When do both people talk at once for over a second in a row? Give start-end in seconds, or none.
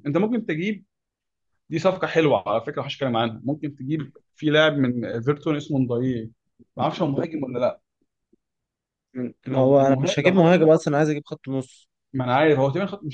9.5-10.7